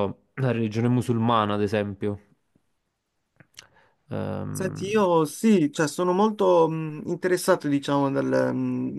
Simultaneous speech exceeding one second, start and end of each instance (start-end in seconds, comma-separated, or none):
none